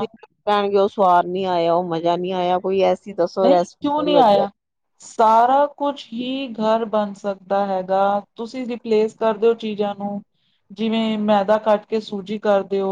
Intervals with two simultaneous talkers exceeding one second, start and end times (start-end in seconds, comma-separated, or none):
none